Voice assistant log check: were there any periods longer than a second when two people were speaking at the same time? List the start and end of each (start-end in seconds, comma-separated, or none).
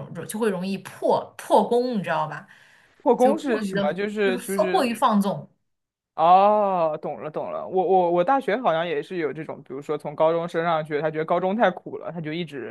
3.2-5.0